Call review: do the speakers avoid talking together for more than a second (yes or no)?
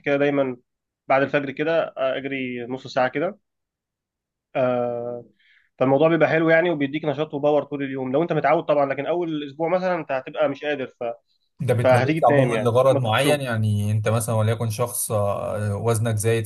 no